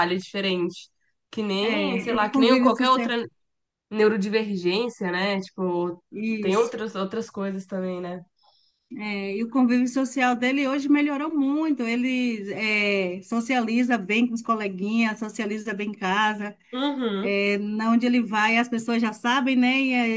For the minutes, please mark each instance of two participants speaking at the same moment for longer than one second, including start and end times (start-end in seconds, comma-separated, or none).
1.6-3.1